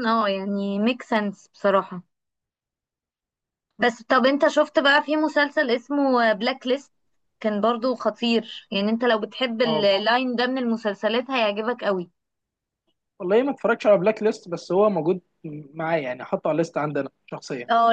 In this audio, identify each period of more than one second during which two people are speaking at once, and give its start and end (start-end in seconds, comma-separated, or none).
none